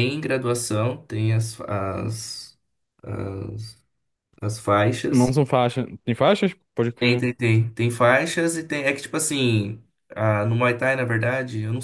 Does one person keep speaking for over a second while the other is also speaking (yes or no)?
no